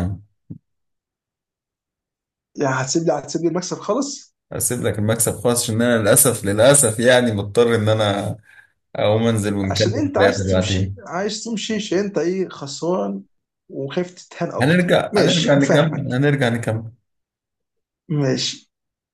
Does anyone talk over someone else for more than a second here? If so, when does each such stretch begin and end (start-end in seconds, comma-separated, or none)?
9.6-11.0, 14.6-16.1